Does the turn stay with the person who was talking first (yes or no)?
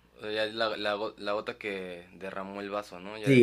no